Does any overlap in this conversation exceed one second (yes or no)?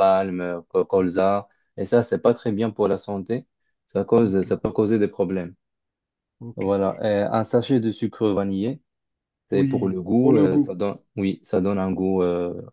yes